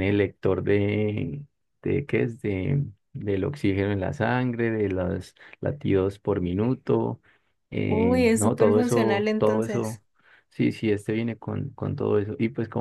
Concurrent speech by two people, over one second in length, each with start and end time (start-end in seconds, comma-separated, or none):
7.9-10.0